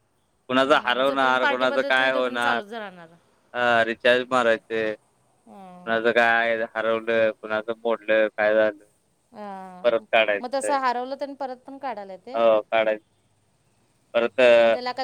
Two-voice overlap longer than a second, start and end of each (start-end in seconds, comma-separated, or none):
1.1-2.6